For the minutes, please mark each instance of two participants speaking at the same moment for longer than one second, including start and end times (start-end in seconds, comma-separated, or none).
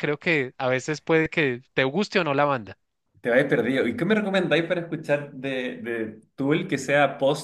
none